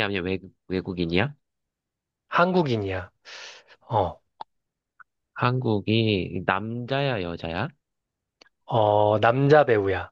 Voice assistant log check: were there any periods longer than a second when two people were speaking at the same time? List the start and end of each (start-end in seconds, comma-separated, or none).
none